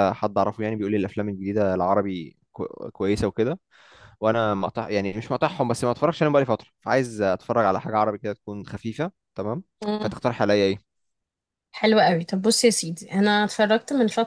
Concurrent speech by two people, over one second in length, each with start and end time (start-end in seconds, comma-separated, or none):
none